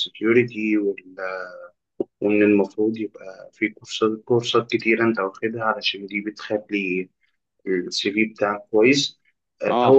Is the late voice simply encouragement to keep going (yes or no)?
yes